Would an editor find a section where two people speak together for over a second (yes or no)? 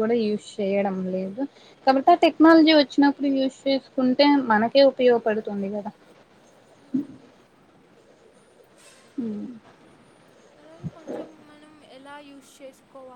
no